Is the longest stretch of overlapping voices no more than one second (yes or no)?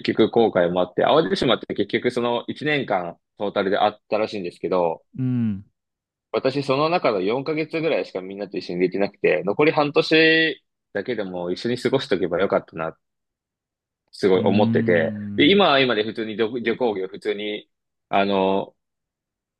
no